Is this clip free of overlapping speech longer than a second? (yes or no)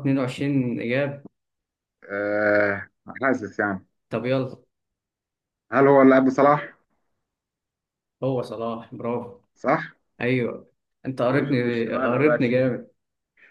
no